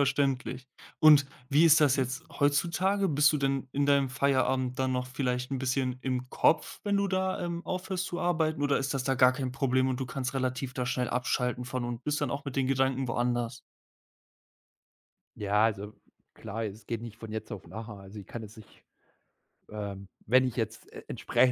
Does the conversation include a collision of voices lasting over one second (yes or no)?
no